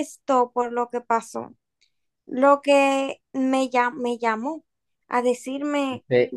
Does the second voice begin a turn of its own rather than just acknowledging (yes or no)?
yes